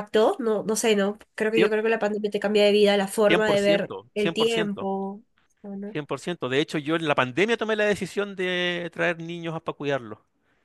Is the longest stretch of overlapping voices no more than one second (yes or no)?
no